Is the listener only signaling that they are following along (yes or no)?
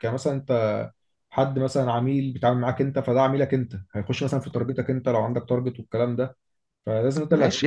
no